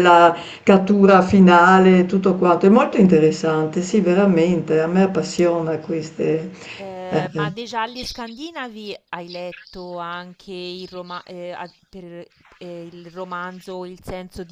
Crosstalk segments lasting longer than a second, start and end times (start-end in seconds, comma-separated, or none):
none